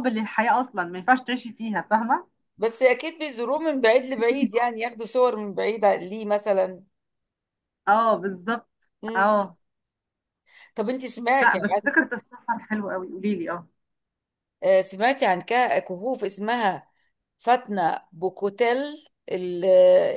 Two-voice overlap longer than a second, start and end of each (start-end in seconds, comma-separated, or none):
none